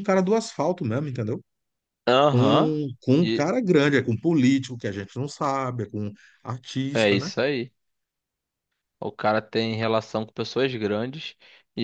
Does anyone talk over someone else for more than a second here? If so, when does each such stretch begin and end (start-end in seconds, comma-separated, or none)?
none